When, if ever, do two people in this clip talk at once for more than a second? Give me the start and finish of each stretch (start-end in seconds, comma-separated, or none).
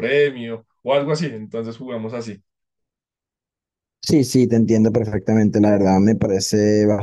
none